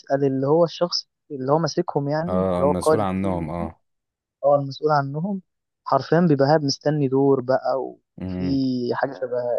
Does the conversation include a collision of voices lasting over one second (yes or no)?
yes